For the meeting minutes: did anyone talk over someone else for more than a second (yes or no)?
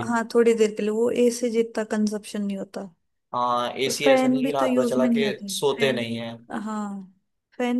yes